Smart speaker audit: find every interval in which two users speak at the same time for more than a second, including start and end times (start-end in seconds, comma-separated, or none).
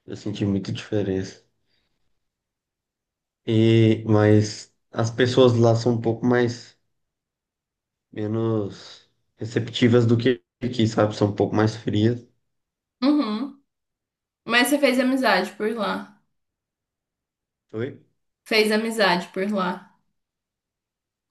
none